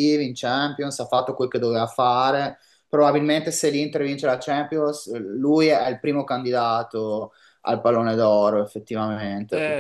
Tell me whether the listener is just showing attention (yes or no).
no